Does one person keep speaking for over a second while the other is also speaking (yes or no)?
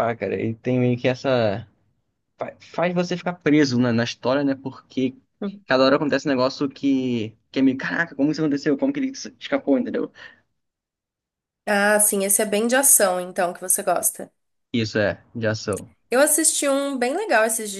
no